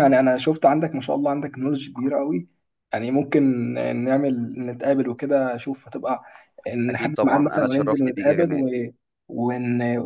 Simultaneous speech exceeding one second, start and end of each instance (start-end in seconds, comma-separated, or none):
6.9-8.7